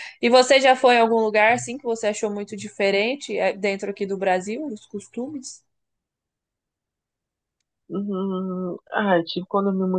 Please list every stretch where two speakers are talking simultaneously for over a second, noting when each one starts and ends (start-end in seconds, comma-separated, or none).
none